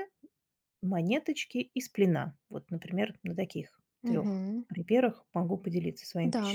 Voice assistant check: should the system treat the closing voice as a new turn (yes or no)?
yes